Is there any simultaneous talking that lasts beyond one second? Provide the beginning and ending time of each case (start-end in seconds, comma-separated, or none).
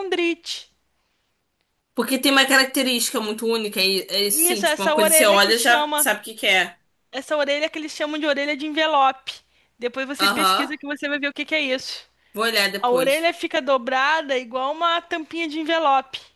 4.3-6.1